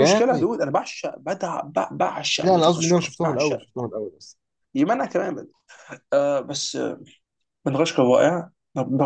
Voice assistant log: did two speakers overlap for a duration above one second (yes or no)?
yes